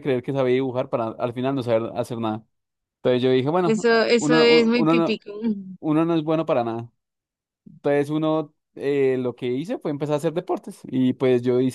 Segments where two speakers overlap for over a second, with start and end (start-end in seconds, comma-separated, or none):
3.6-5.2